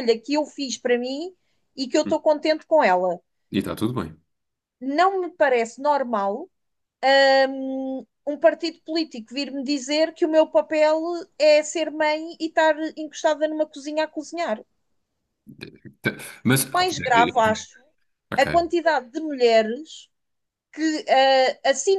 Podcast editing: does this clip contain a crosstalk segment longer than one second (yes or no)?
no